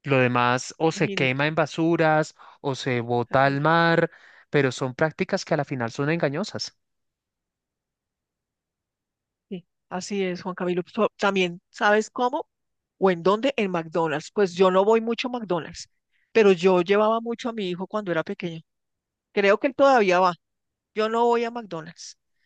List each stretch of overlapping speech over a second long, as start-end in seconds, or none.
none